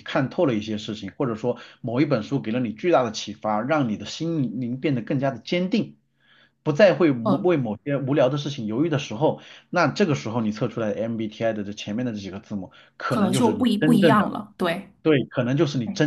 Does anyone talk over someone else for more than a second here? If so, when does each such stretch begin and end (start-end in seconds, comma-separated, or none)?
13.1-14.3